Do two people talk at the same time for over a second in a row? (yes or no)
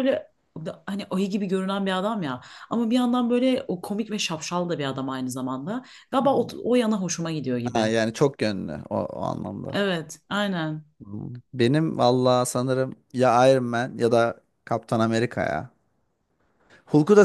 no